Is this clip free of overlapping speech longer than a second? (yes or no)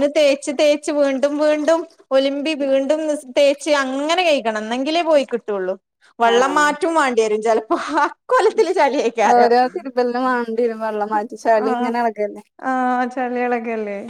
yes